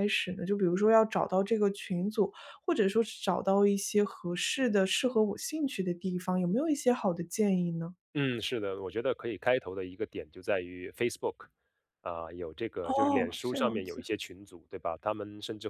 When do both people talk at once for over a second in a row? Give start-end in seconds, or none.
12.8-14.1